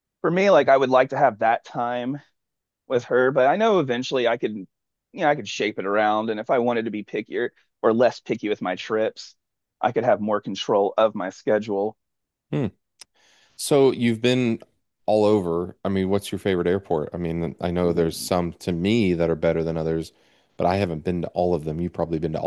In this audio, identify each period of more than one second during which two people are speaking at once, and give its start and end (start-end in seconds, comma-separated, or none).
none